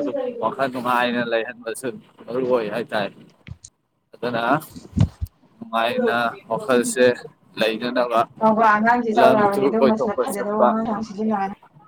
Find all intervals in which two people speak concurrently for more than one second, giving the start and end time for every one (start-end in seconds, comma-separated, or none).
9.1-10.7